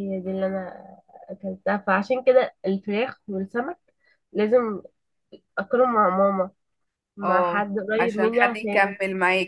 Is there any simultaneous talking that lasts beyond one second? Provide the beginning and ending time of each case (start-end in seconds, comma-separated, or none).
7.2-8.9